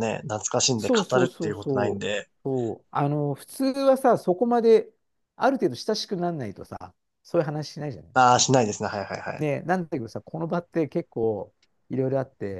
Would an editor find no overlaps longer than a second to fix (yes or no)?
no